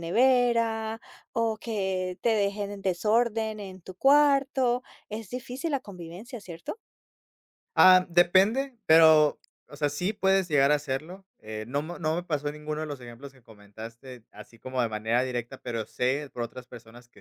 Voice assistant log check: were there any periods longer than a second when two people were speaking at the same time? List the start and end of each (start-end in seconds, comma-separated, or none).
none